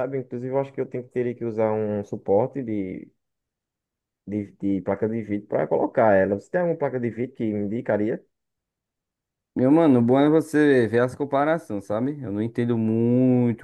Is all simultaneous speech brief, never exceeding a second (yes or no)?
yes